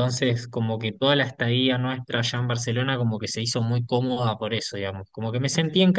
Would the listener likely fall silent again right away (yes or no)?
yes